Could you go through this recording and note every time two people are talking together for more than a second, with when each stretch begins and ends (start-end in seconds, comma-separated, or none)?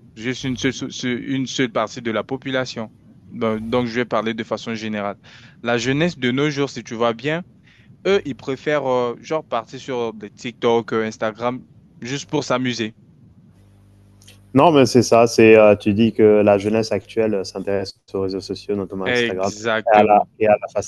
19.1-20.3